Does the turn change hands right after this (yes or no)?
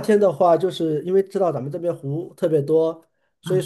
no